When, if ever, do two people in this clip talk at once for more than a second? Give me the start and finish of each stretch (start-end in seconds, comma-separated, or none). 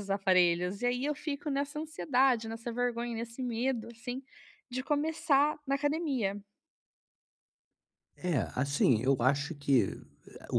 none